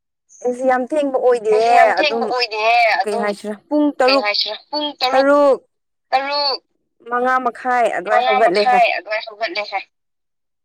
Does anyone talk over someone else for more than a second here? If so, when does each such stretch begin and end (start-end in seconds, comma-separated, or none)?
none